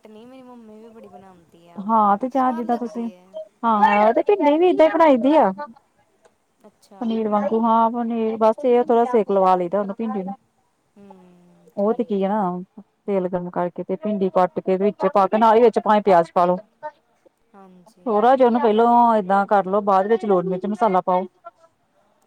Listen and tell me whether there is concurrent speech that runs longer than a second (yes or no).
no